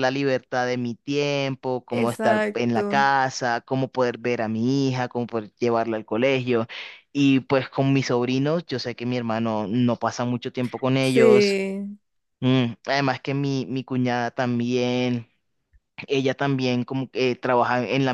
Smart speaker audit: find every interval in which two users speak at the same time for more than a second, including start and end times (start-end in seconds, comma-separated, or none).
1.9-3.1